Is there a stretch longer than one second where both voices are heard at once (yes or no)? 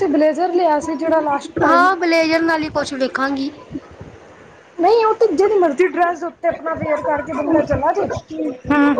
no